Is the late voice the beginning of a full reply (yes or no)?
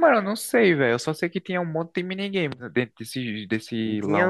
yes